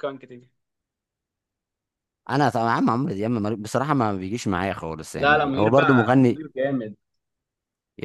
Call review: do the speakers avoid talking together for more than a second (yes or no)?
no